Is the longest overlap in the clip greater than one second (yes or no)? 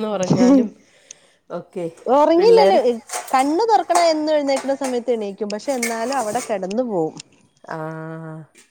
no